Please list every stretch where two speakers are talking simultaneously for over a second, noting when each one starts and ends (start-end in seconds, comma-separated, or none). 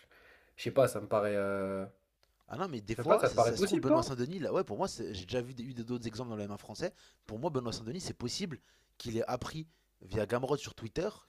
2.9-4.1